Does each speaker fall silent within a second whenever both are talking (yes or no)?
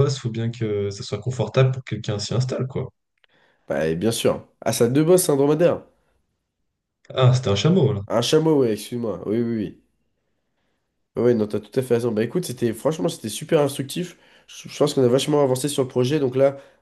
yes